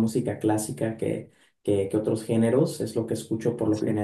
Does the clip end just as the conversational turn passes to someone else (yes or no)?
no